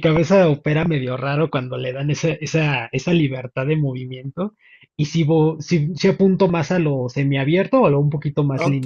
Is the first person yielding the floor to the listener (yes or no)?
yes